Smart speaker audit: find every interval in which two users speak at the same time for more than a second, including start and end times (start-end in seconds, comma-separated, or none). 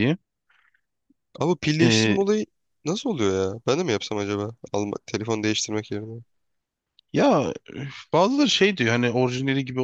none